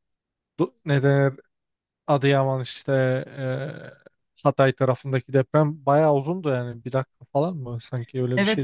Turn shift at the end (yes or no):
yes